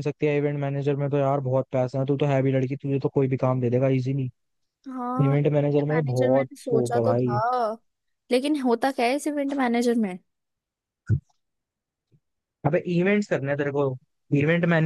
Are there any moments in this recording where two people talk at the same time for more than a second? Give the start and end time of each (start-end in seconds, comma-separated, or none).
5.3-7.4